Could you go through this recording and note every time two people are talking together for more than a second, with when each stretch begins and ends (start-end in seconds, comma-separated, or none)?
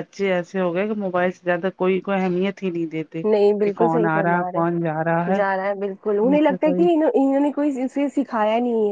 3.6-5.0